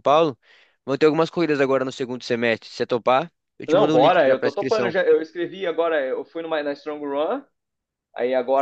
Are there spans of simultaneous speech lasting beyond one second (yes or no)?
yes